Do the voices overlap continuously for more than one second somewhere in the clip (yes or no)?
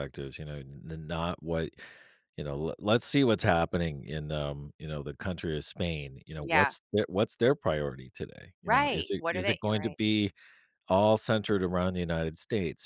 yes